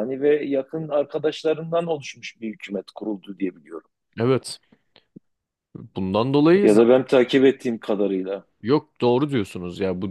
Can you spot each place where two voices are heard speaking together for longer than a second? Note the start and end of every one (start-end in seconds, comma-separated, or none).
none